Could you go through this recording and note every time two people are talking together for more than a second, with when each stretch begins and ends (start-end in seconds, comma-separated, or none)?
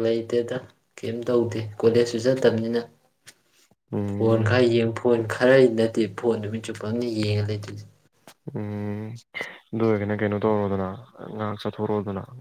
none